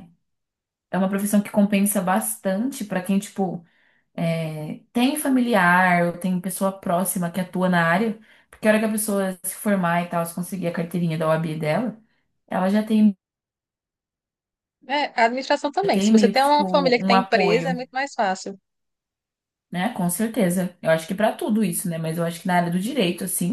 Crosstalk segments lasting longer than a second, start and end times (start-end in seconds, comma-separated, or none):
15.8-17.8